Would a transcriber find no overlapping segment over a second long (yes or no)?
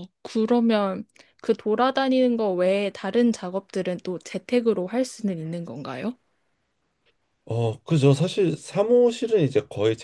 yes